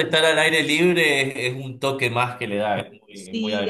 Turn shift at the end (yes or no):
yes